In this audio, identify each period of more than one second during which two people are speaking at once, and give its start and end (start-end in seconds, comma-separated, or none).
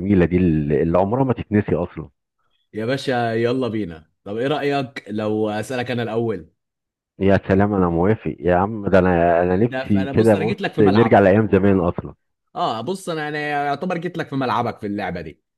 9.6-11.2